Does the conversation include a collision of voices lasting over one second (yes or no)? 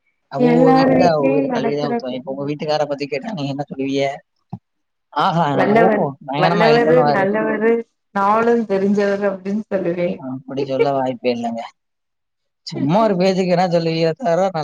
yes